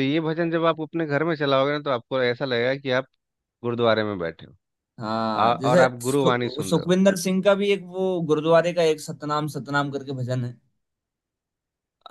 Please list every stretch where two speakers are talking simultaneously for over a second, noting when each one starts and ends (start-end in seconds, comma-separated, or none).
5.4-6.9